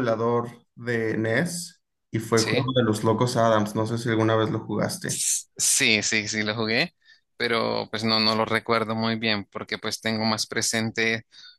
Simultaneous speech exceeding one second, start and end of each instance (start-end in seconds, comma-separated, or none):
none